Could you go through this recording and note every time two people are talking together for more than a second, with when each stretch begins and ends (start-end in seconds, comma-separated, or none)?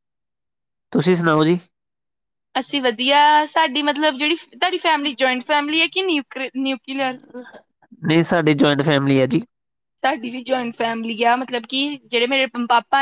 none